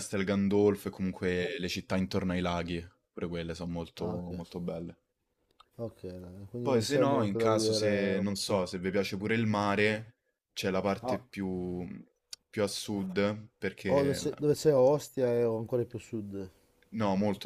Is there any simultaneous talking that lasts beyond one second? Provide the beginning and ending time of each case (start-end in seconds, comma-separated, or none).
6.6-8.6